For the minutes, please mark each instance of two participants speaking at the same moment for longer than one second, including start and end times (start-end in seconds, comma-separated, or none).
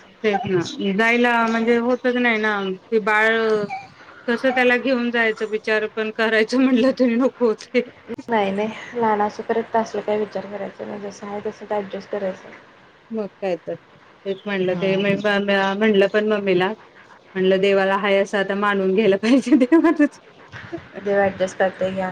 none